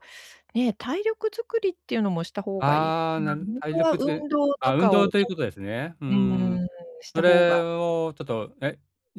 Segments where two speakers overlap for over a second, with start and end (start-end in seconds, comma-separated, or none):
2.6-5.1